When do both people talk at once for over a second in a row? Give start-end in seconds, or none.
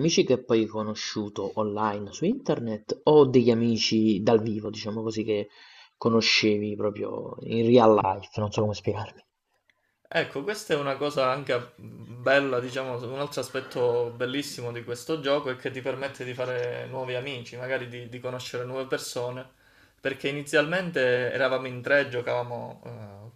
none